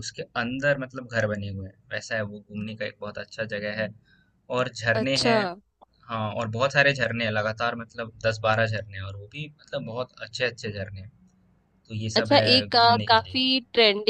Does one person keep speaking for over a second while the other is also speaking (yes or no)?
yes